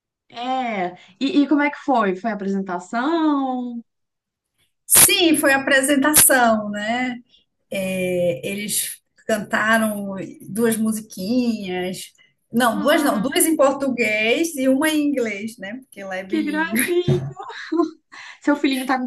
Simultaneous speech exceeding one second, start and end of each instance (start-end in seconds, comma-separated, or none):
none